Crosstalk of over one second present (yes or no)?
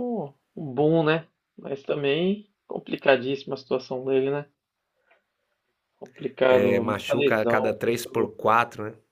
yes